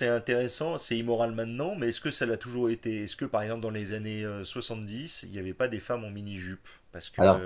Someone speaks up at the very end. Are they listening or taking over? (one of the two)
listening